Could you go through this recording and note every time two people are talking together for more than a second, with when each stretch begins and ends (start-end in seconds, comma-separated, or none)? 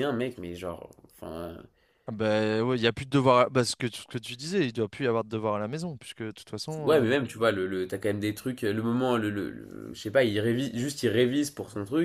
none